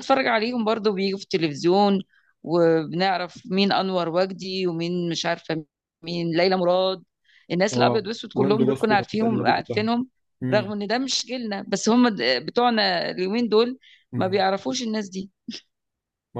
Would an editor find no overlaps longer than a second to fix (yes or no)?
no